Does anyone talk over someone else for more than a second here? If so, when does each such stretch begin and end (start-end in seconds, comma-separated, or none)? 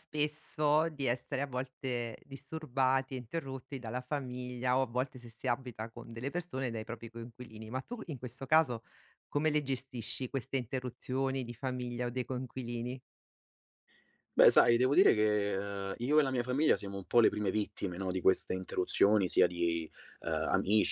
none